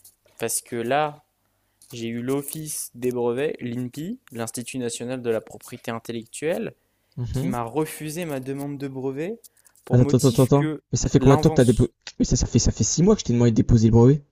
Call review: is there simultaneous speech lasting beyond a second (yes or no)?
yes